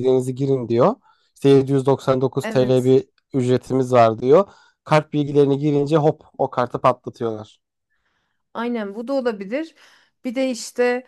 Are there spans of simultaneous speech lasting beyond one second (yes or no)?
no